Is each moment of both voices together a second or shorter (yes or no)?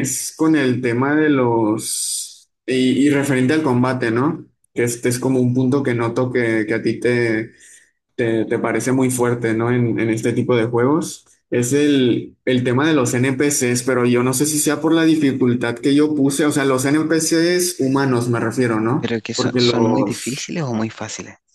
no